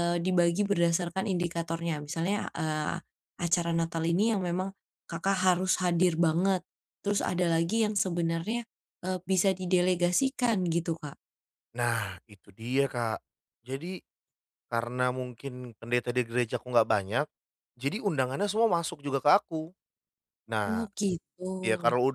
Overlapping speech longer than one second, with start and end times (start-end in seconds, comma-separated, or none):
none